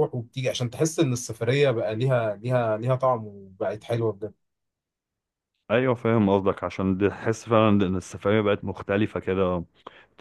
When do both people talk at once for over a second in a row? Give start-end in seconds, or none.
none